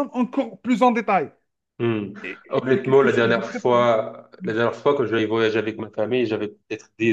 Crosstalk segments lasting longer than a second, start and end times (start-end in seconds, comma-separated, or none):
2.5-3.9